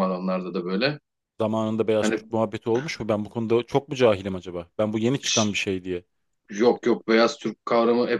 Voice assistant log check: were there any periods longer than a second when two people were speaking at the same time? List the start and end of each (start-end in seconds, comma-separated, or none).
none